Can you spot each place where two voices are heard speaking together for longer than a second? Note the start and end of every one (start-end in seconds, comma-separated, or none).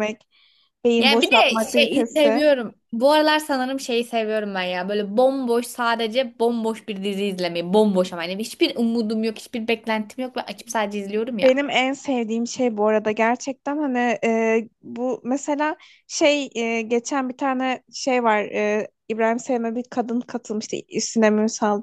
1.0-2.4